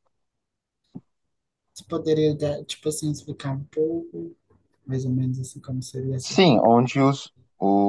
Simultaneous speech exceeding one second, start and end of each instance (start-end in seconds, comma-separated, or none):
none